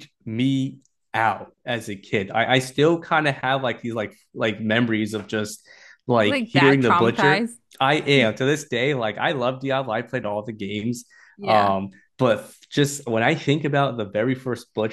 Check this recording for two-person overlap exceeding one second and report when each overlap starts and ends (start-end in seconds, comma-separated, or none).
6.2-7.6